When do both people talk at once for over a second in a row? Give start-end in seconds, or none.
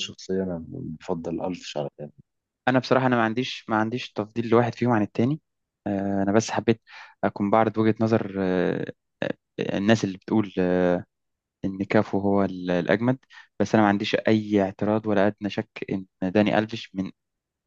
none